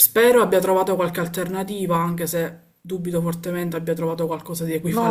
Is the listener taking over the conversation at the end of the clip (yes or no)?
yes